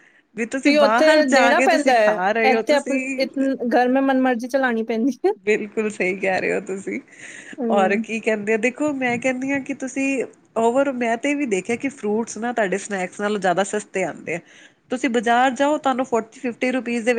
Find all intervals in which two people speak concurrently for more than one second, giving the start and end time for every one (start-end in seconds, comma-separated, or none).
0.8-3.0